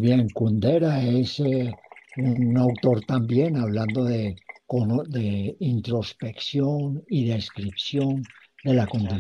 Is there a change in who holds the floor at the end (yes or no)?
no